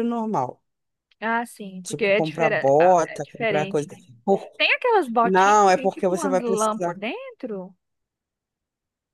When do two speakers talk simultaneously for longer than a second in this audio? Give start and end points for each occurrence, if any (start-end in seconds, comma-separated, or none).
1.8-4.0, 5.2-7.0